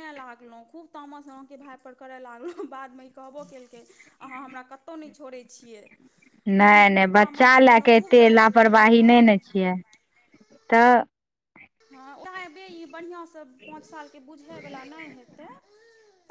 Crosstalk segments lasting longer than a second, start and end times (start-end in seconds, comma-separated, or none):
6.6-9.4